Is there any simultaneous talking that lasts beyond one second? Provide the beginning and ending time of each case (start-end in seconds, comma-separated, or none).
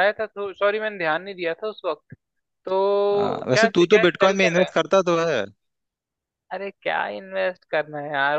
3.1-4.8